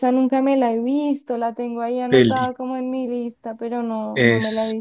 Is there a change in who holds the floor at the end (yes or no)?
yes